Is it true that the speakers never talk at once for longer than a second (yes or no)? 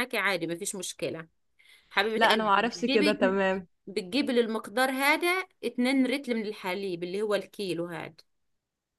no